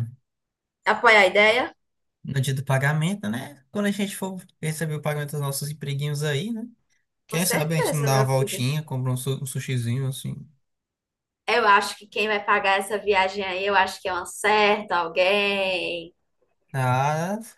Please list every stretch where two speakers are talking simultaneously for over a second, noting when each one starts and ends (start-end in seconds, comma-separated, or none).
7.3-8.6